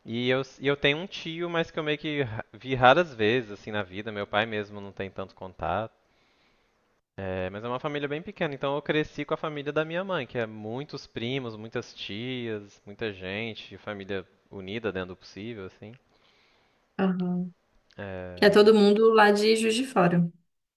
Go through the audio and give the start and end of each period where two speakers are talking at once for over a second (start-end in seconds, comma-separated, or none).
none